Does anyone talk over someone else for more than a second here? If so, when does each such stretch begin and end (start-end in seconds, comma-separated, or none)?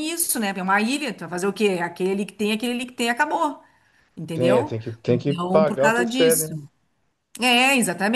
4.3-6.6